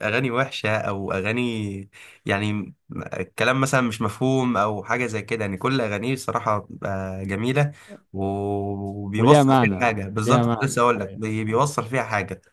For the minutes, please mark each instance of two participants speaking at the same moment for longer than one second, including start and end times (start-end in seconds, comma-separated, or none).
9.2-11.6